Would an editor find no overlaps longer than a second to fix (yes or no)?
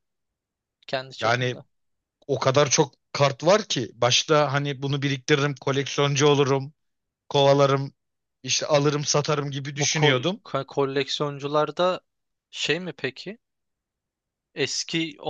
yes